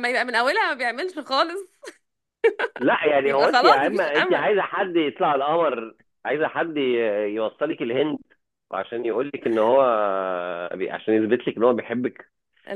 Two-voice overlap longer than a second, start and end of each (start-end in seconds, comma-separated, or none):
3.2-4.5